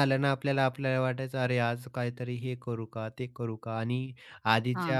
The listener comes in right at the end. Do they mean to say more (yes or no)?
no